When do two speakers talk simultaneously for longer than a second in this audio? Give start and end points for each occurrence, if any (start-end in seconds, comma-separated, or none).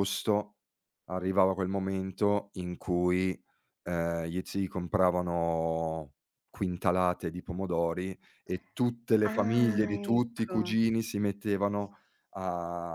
9.2-10.7